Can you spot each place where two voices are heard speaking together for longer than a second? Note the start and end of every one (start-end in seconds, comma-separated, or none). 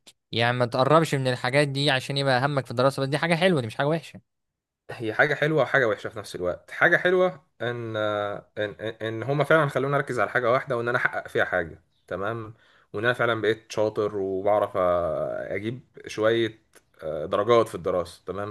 none